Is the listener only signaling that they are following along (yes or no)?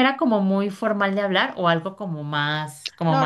no